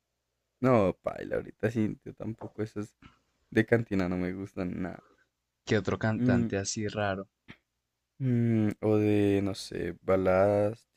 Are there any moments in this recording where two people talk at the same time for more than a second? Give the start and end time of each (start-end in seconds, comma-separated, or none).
none